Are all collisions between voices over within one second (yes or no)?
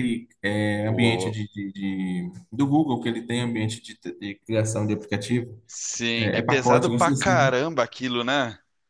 no